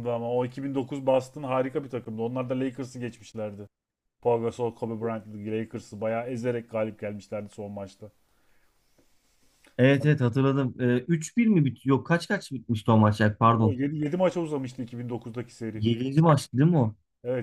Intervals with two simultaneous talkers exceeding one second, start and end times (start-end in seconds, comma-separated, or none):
none